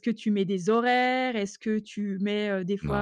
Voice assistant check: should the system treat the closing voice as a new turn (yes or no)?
no